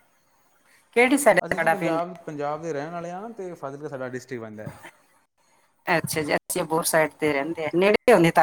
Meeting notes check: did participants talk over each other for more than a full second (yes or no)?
no